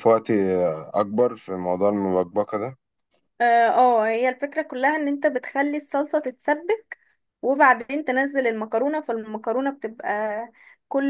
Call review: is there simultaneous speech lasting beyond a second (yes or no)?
no